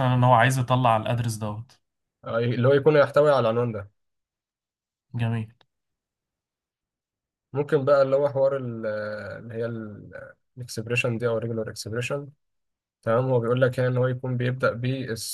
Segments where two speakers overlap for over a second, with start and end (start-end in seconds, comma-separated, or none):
none